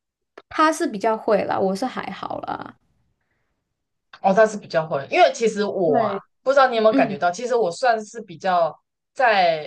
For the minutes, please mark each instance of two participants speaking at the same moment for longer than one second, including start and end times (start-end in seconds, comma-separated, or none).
none